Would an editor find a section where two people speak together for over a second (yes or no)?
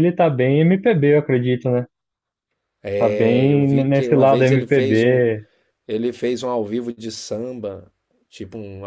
yes